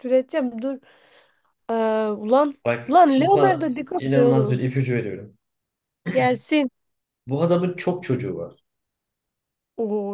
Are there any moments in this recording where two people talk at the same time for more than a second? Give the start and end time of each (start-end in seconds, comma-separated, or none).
2.6-4.7